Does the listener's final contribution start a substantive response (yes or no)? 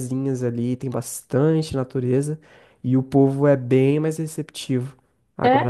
no